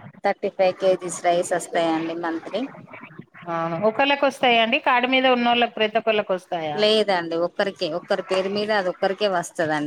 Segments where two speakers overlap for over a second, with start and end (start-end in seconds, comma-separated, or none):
none